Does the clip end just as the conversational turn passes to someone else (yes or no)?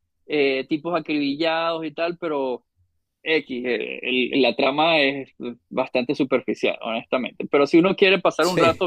no